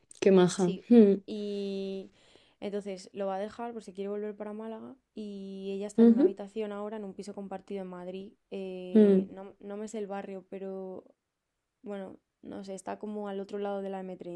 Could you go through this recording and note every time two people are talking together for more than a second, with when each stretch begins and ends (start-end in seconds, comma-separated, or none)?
none